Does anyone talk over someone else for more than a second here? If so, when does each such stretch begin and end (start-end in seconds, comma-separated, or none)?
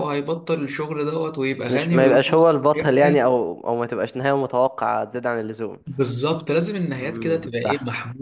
1.7-3.2